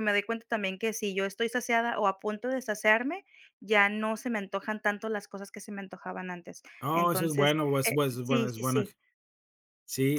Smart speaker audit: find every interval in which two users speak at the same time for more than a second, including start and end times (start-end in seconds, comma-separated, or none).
6.8-8.8